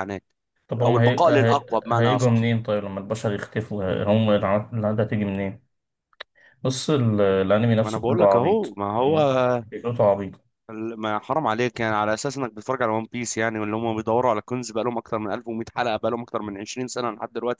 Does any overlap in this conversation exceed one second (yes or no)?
yes